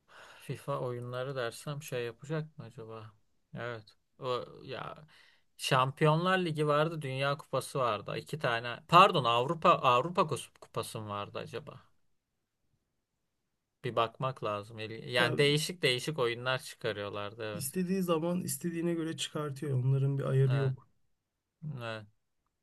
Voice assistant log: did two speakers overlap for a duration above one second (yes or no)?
no